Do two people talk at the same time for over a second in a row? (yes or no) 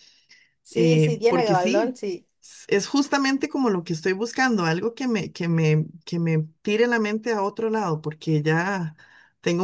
yes